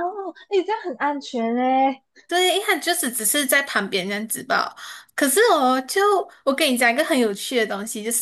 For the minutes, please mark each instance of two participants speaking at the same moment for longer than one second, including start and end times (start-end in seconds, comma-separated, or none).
none